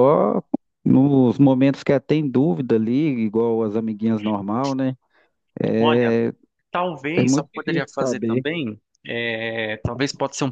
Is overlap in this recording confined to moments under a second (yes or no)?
no